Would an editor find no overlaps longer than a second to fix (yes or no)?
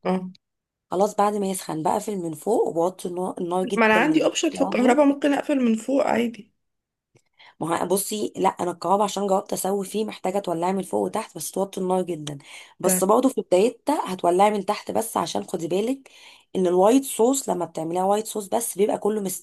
no